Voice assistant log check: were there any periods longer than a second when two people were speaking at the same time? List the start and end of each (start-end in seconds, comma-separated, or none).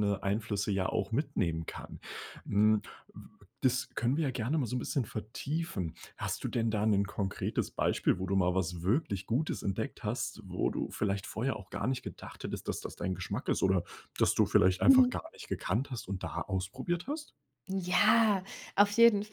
none